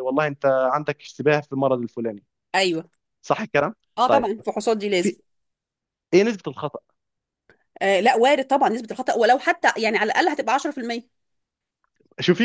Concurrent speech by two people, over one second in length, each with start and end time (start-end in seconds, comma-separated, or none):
none